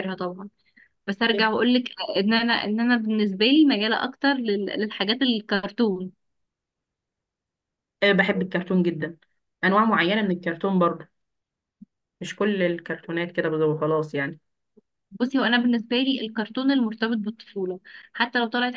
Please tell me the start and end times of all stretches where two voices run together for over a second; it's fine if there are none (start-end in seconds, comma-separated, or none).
none